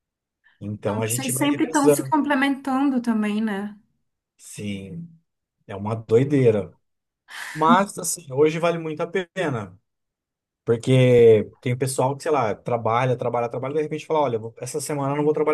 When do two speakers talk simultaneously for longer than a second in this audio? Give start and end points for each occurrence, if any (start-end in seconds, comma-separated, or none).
0.8-2.1